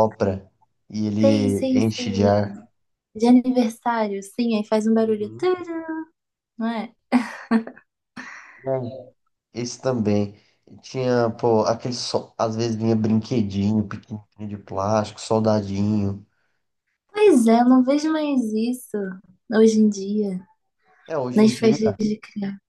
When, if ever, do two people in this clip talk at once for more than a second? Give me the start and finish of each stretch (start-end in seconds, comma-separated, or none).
1.2-2.5